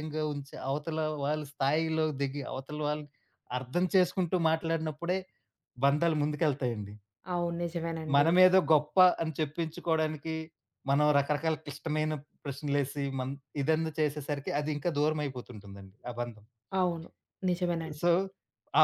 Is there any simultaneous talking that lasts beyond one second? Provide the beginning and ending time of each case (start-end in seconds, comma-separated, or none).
none